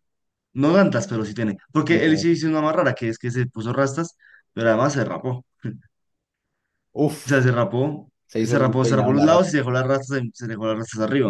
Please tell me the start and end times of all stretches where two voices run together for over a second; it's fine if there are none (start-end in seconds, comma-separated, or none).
8.3-9.5